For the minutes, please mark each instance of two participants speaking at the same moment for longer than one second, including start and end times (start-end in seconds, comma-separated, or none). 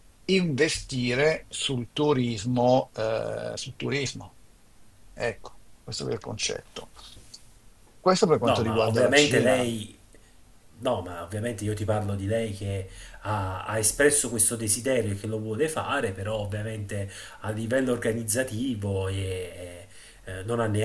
8.4-9.7